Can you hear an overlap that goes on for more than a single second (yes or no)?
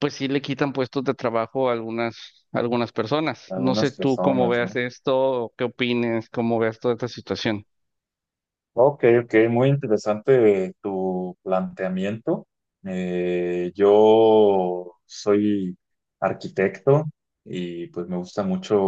yes